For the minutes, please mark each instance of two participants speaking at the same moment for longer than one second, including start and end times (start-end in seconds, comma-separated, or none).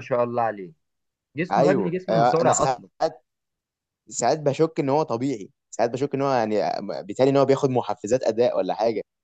1.5-2.9